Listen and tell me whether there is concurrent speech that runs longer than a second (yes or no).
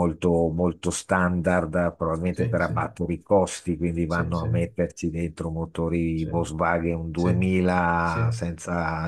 no